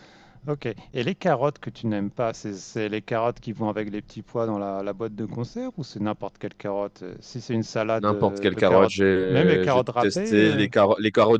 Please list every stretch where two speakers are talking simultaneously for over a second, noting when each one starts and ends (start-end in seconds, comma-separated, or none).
8.0-10.6